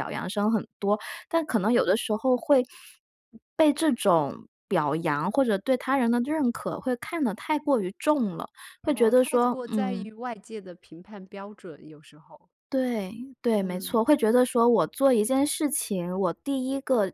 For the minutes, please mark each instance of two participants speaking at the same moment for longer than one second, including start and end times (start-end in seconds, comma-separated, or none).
8.8-10.1